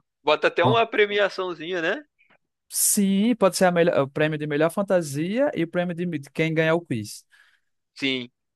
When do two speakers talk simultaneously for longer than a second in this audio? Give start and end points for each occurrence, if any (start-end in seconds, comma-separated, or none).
none